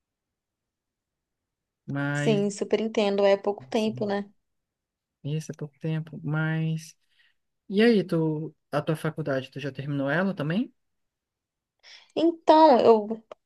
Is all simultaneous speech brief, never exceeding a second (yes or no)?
yes